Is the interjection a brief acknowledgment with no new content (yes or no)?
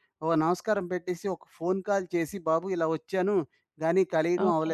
yes